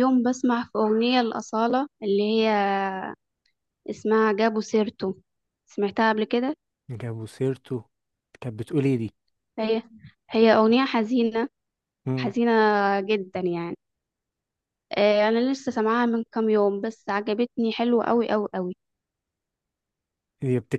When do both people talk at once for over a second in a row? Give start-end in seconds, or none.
none